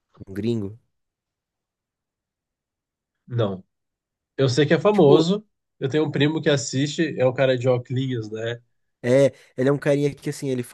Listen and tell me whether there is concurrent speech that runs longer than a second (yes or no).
no